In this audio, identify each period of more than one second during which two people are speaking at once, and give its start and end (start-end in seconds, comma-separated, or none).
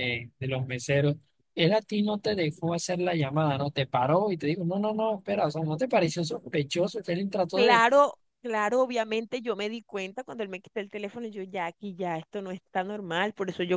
none